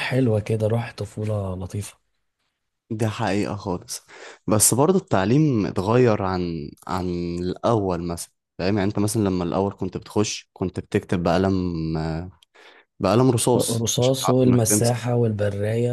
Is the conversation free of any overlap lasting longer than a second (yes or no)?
no